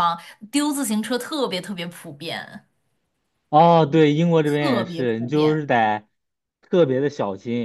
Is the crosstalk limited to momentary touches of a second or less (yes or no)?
no